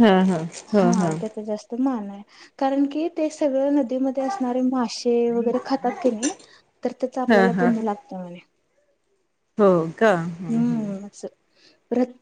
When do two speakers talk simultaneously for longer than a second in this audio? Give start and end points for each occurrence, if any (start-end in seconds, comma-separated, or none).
none